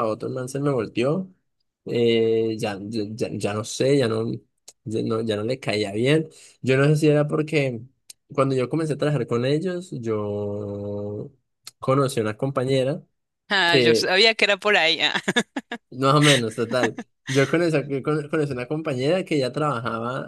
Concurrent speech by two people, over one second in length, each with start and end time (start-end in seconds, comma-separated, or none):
none